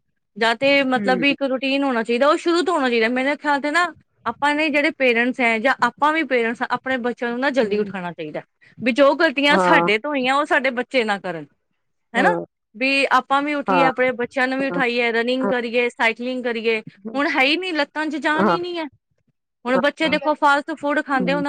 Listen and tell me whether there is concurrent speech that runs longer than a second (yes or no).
no